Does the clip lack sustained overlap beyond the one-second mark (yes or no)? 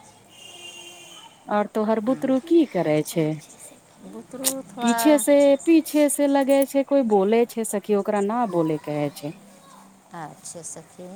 yes